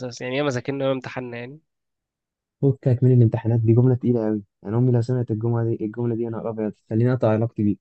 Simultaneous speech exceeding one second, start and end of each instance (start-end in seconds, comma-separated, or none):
none